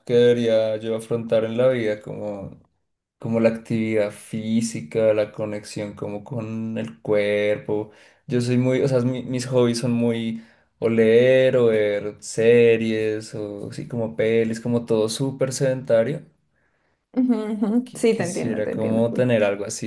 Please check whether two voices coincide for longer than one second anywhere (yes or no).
yes